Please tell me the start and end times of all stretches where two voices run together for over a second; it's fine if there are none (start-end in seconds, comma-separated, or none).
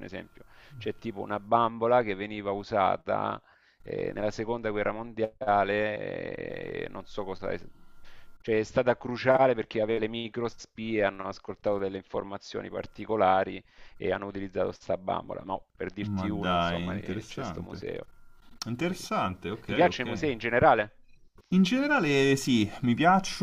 16.0-17.8